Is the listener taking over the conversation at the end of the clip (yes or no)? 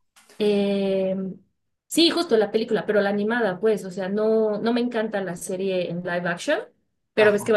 no